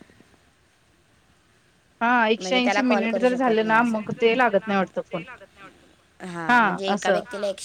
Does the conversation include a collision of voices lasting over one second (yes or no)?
yes